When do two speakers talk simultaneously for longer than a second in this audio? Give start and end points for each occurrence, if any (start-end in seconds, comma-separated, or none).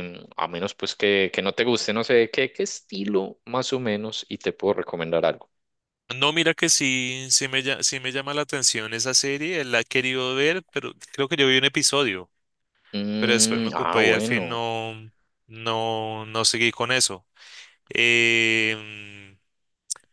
13.2-14.6